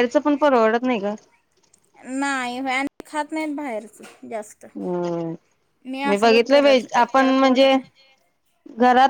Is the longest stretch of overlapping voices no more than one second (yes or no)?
no